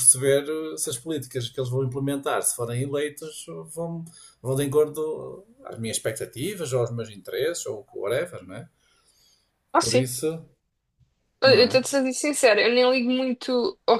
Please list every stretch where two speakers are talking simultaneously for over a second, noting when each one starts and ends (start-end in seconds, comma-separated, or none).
none